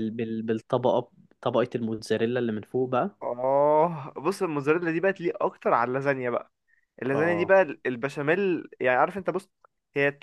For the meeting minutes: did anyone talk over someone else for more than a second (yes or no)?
no